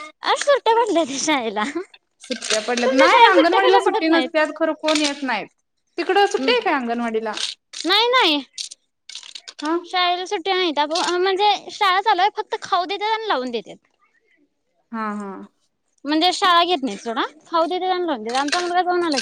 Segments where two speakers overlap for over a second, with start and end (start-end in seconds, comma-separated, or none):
2.3-3.8